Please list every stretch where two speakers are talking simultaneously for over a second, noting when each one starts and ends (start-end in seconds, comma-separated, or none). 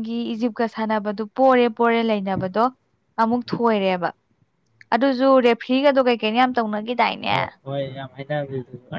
none